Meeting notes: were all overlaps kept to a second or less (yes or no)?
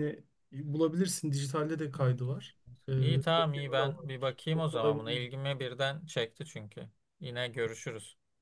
no